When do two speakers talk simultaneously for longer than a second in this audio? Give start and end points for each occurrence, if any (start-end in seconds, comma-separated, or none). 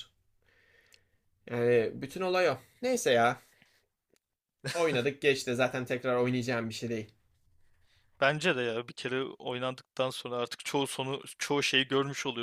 none